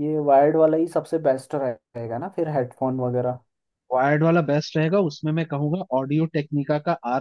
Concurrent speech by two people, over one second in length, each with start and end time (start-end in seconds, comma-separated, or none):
none